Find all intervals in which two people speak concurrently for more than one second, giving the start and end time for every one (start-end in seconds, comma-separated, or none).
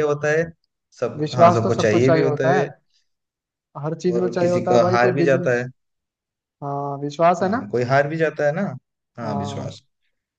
1.2-2.6, 4.1-5.6